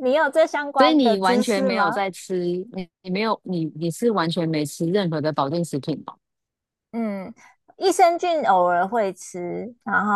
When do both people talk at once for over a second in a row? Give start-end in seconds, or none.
0.8-2.0